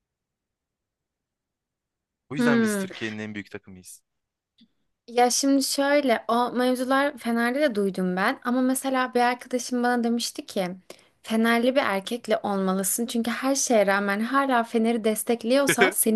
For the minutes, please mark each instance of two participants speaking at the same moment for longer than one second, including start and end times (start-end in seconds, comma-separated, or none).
none